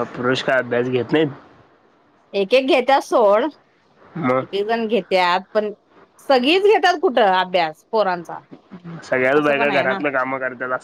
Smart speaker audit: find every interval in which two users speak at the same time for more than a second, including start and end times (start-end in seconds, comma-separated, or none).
none